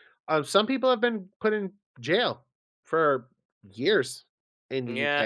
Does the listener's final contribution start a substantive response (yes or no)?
yes